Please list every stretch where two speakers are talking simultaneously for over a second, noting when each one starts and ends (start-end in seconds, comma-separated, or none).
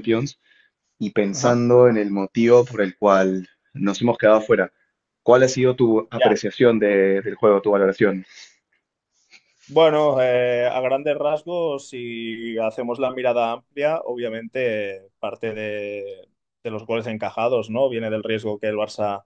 none